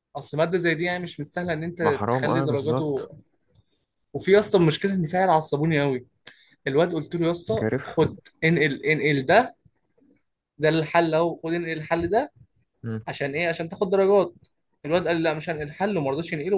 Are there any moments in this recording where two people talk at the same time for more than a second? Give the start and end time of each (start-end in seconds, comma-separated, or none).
1.8-3.1